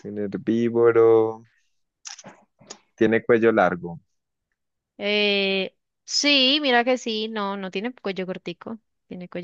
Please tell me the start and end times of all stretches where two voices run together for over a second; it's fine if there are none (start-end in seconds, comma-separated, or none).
none